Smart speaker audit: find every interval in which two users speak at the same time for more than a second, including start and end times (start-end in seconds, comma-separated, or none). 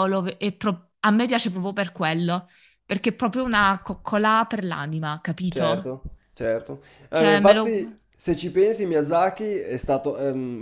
none